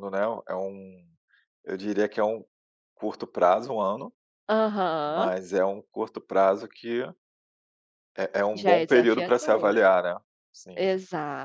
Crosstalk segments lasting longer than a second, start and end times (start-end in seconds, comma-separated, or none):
8.5-9.8